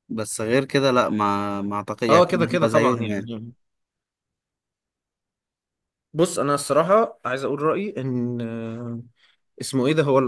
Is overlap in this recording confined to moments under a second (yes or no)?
no